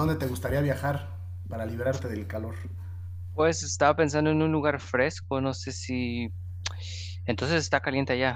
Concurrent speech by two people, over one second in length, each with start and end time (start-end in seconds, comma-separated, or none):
none